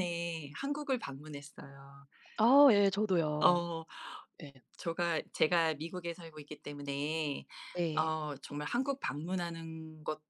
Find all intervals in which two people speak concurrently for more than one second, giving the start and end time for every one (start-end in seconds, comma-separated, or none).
none